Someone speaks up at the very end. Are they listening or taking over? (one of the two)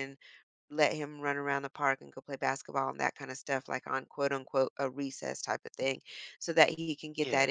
listening